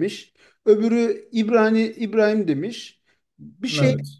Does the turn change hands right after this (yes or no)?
no